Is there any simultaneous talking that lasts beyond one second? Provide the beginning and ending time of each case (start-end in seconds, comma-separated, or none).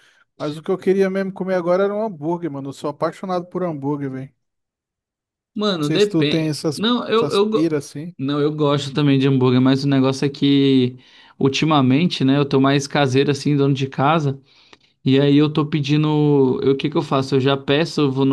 5.8-7.8